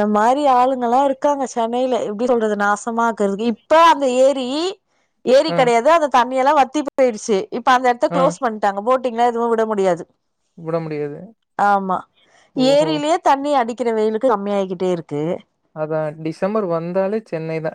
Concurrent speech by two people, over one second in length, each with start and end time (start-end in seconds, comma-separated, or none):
none